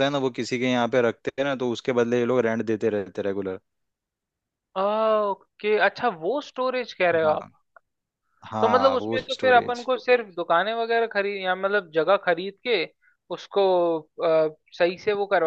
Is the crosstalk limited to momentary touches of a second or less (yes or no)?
no